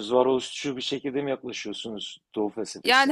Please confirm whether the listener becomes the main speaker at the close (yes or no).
yes